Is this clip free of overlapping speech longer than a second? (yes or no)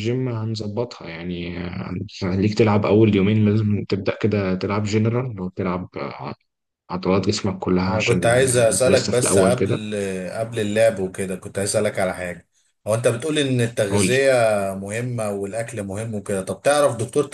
no